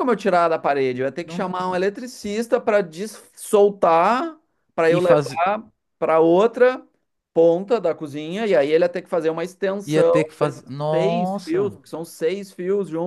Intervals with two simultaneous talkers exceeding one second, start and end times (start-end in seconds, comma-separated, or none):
9.8-11.8